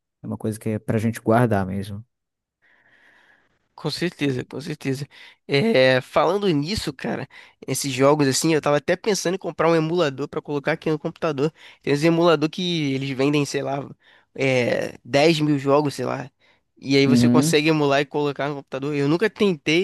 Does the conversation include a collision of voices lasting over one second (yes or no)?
no